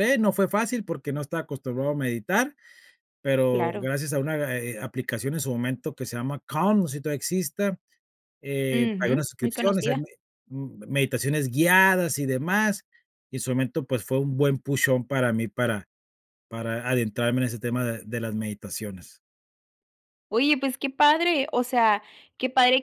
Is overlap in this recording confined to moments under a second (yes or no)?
no